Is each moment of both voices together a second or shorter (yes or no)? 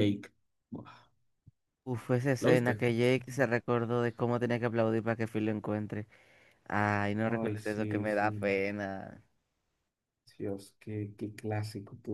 no